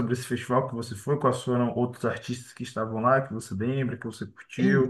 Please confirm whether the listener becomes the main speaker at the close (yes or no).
yes